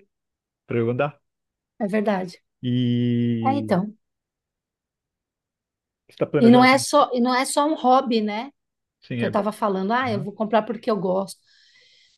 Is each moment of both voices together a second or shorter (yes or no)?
yes